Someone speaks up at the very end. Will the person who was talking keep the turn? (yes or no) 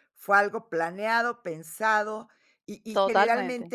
yes